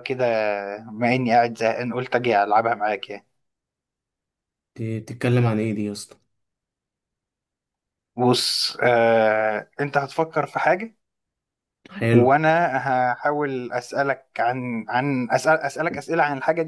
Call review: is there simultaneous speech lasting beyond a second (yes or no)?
no